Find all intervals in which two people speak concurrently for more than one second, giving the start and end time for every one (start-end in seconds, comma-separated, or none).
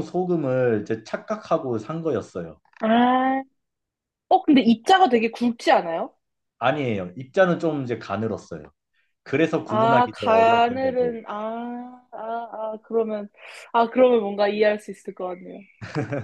9.7-11.2